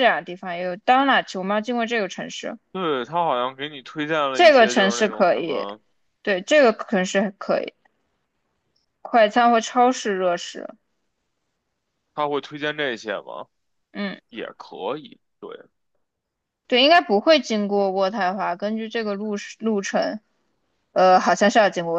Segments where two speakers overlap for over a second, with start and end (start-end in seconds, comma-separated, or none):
4.3-5.7